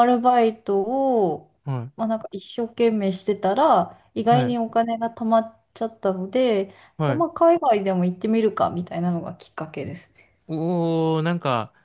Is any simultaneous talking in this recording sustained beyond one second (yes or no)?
no